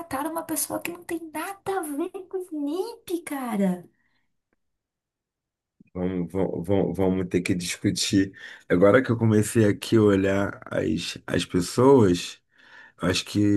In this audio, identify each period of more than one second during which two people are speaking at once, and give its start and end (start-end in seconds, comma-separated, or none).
none